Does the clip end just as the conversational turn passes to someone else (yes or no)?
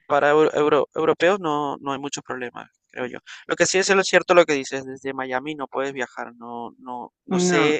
no